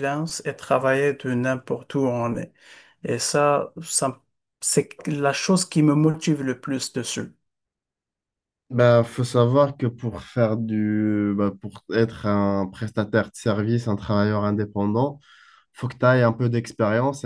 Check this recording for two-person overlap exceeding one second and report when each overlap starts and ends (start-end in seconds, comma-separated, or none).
none